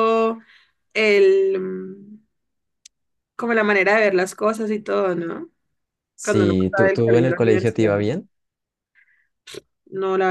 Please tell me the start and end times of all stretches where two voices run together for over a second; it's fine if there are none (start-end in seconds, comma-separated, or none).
6.2-7.9